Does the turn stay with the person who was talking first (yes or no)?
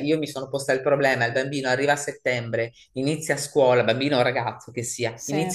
yes